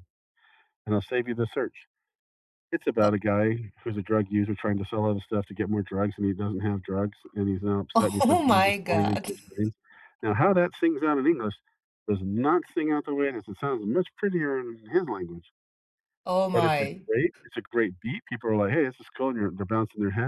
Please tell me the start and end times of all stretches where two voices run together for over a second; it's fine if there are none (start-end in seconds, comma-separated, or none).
8.0-9.3